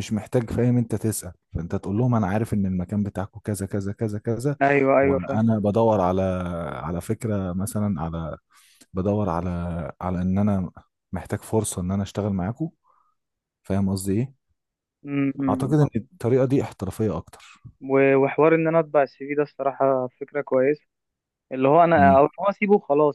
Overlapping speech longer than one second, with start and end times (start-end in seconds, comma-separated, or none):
none